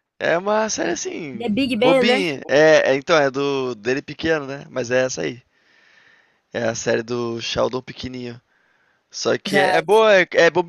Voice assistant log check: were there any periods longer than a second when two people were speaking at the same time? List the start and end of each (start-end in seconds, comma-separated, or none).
0.8-2.2